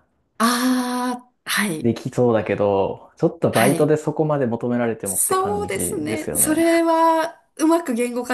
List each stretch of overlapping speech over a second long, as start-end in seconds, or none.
5.0-6.6